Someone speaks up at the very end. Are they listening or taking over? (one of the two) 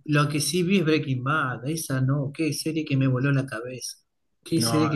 listening